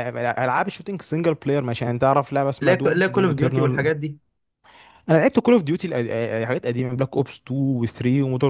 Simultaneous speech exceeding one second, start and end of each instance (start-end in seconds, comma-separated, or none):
2.6-3.9